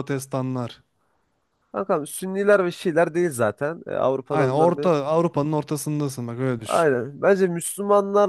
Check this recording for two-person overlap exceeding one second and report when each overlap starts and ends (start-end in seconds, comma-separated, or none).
none